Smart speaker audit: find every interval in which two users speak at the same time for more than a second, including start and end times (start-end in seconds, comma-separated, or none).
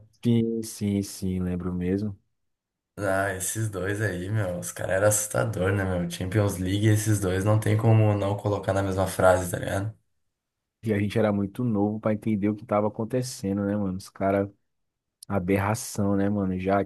none